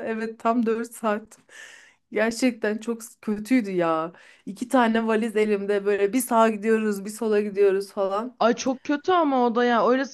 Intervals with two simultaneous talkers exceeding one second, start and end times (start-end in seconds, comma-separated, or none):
none